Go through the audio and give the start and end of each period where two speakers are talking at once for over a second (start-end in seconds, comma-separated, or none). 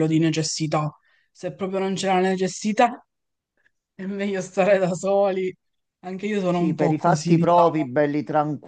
6.5-7.9